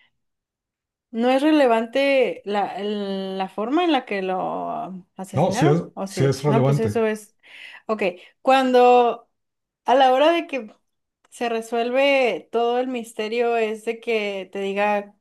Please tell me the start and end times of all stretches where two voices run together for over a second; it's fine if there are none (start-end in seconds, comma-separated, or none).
5.3-7.0